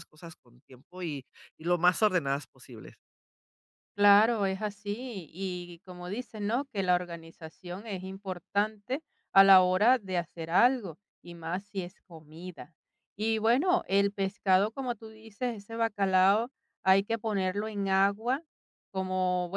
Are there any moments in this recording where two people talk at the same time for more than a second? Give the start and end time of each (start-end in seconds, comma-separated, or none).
none